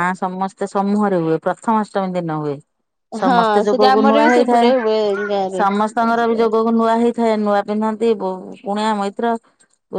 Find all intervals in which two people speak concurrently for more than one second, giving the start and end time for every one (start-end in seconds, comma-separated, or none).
3.2-4.7